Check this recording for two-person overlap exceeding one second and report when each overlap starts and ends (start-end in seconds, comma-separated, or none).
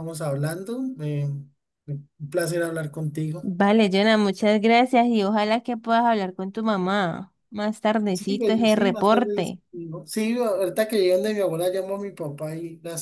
8.1-9.6